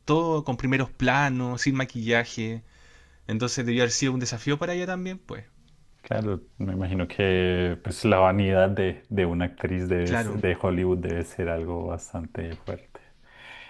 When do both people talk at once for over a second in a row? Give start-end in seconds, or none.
none